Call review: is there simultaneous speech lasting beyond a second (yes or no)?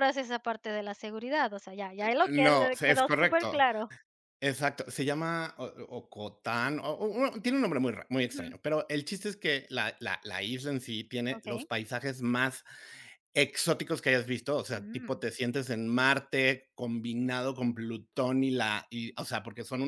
yes